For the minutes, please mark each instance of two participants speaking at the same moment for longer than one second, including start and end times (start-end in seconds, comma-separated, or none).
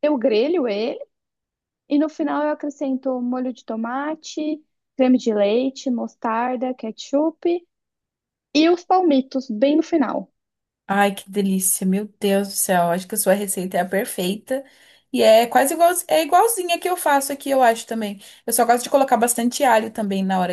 none